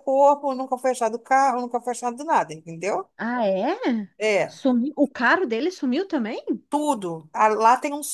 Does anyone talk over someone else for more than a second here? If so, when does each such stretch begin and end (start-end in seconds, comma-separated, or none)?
none